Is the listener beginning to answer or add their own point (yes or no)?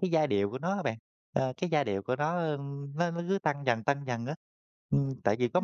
yes